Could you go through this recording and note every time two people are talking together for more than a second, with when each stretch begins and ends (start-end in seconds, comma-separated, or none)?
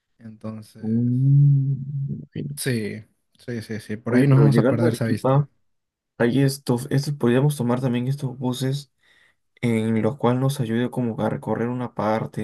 4.1-5.5